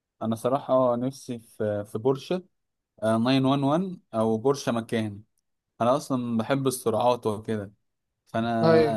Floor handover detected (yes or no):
no